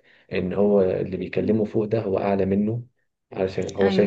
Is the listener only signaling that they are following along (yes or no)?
yes